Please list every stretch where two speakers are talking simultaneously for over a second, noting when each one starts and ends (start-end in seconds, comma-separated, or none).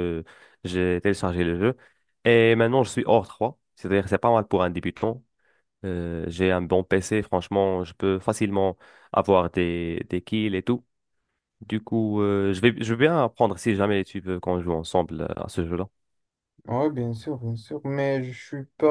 none